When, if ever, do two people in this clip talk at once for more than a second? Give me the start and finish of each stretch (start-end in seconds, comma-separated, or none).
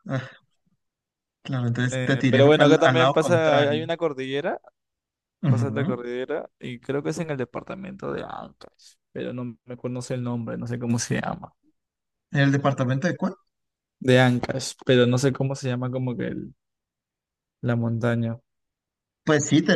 1.9-3.9